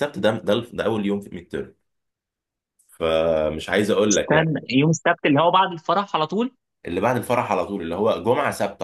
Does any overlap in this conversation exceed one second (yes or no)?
no